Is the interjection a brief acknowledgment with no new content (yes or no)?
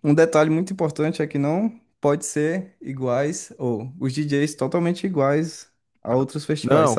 no